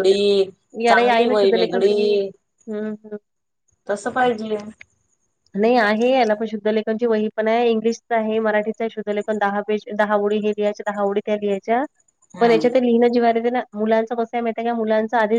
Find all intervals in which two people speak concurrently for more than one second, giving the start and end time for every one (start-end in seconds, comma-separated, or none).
0.9-2.3